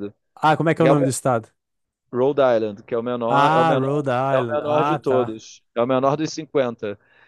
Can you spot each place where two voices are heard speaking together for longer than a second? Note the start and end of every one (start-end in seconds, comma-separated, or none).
3.3-5.4